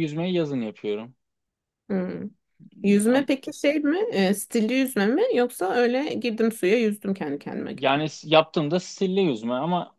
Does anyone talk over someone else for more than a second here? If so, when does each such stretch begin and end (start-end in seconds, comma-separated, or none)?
none